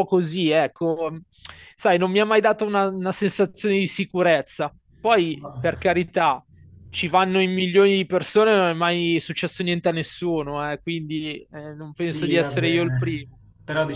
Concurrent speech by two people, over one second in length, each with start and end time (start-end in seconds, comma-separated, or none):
11.9-13.3